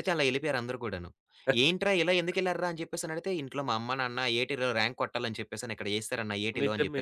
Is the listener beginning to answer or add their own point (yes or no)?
yes